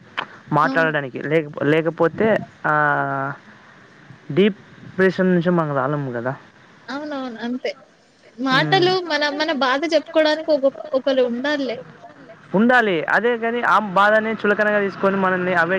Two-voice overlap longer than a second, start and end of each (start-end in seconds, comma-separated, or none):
none